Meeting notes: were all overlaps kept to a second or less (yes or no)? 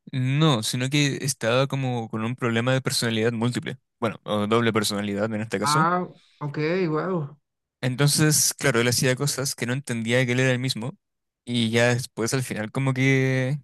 yes